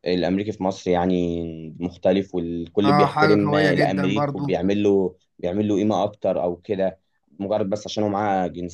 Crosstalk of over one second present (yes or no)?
yes